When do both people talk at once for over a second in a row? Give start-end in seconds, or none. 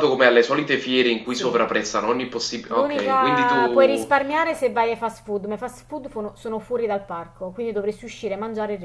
2.7-4.1